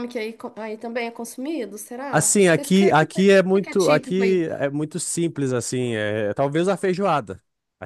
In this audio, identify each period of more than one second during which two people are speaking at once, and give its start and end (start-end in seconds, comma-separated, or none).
2.1-4.5